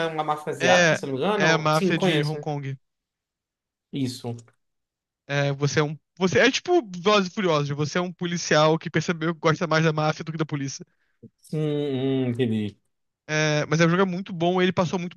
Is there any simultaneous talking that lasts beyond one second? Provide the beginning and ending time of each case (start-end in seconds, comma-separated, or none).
0.6-2.4